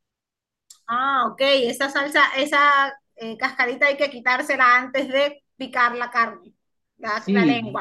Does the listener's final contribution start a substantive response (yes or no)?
yes